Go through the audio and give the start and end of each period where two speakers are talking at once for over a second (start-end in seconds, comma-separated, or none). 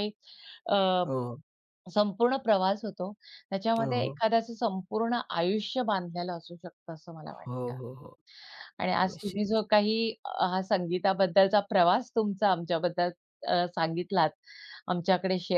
none